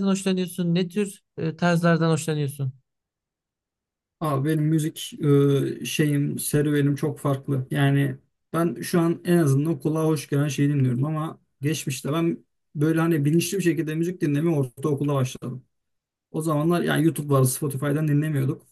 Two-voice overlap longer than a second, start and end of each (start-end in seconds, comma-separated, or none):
none